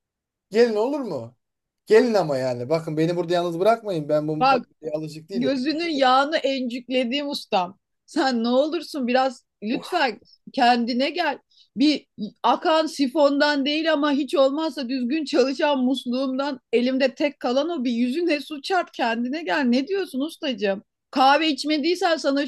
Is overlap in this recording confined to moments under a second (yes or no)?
yes